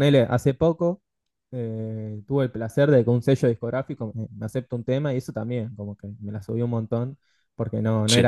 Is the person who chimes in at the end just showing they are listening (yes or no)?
yes